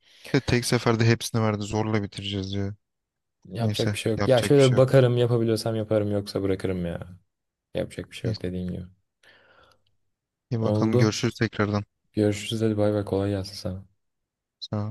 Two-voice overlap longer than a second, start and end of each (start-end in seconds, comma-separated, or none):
3.6-5.0